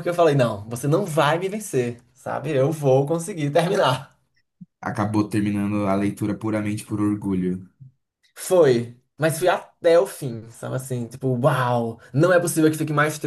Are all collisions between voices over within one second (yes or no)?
yes